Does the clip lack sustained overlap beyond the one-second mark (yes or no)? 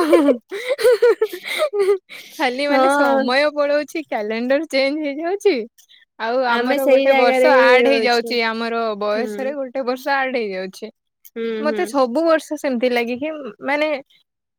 no